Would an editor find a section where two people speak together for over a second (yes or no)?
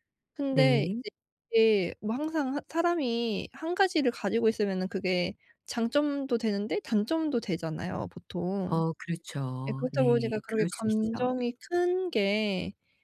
yes